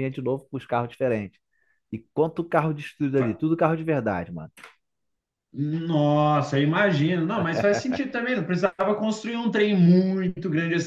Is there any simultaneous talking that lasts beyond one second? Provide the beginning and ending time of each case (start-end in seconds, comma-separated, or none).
none